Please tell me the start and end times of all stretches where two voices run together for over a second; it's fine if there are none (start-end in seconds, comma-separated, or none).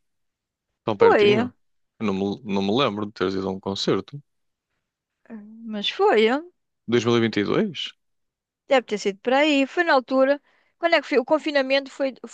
none